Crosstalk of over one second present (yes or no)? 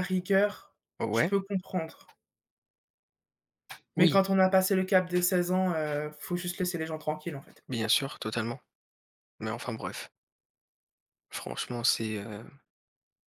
no